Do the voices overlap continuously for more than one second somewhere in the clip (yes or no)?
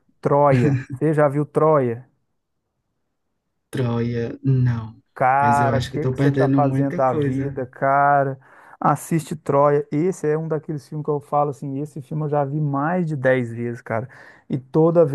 yes